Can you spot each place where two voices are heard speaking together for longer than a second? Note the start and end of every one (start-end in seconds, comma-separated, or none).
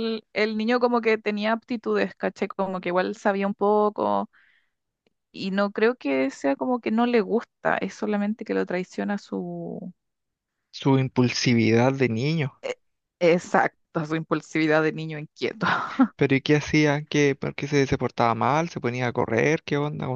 none